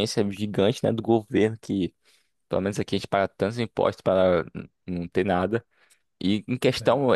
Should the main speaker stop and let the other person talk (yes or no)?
no